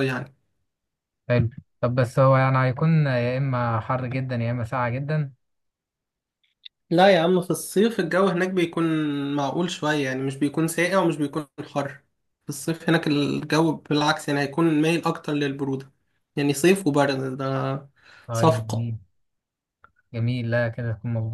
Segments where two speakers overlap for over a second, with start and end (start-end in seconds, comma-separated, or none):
none